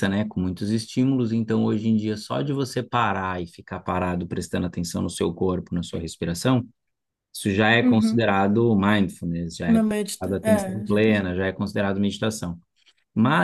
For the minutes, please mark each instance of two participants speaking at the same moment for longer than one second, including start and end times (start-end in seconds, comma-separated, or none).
9.7-11.3